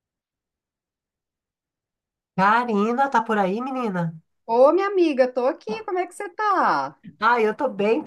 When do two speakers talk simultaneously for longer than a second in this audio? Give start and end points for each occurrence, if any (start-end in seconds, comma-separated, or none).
none